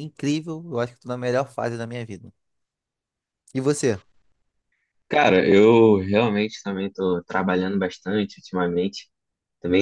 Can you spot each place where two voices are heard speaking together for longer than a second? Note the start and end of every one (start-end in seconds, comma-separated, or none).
none